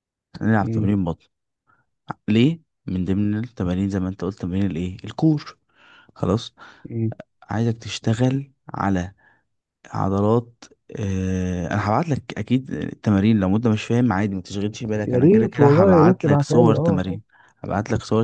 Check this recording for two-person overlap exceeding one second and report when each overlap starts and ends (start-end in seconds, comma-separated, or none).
15.0-17.2